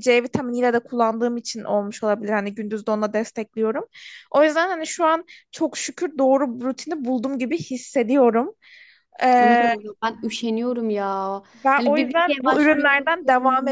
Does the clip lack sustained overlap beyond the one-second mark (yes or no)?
no